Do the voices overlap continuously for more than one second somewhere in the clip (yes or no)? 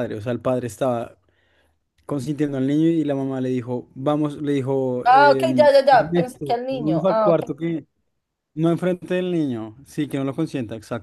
yes